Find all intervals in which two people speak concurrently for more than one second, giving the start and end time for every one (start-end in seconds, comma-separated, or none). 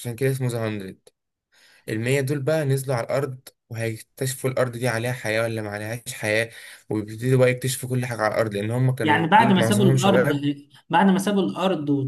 9.0-10.3